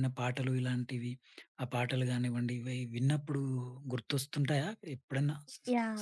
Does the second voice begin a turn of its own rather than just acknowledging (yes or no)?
yes